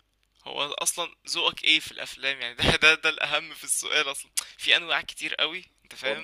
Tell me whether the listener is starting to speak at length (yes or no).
no